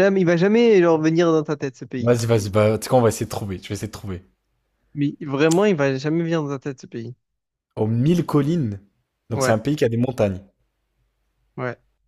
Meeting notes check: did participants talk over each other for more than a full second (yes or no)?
no